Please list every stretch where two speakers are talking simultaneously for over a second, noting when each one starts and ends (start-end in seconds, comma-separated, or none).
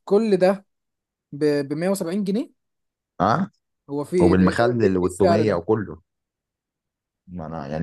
4.2-5.6